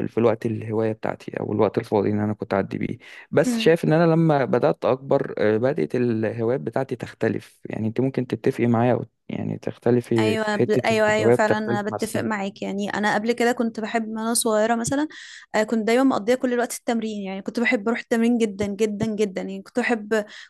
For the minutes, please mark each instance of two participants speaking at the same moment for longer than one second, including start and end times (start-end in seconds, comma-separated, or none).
10.2-12.3